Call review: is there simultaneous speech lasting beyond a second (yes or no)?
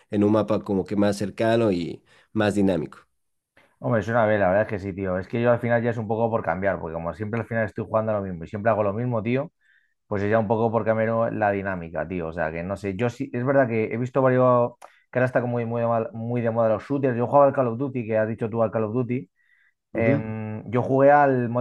no